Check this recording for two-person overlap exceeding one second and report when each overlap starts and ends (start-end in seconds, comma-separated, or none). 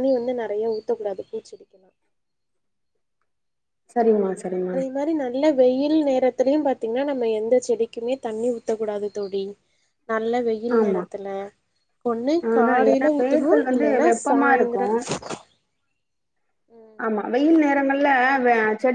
12.5-14.8